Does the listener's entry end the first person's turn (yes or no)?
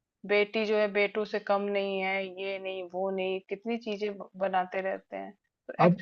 yes